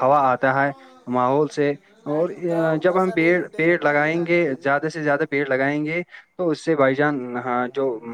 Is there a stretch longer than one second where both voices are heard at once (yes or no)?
yes